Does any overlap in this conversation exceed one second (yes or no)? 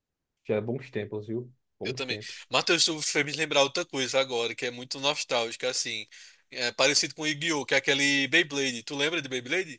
no